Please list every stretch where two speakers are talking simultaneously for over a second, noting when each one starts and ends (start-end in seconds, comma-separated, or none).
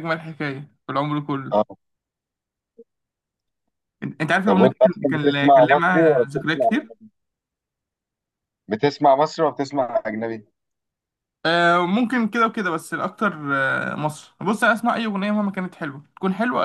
4.4-6.7